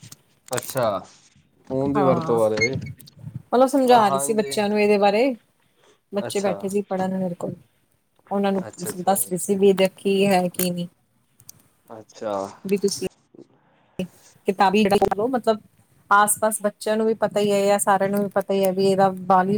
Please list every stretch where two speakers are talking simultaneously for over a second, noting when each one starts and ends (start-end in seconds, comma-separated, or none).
none